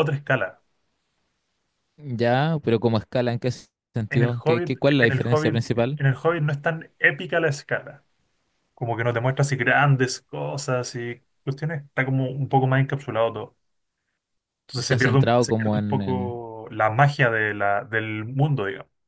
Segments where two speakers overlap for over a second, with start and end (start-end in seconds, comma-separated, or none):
4.1-6.0, 14.8-16.3